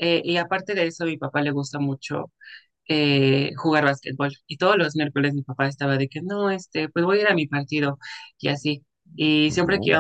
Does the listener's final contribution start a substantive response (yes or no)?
no